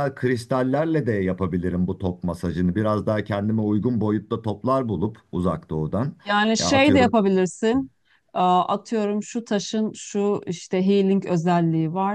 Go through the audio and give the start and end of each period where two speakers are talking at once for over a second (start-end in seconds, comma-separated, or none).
none